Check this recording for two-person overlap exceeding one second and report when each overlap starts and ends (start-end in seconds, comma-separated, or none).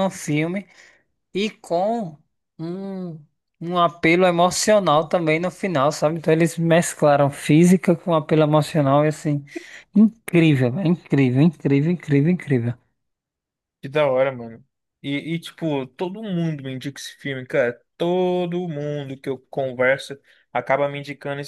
none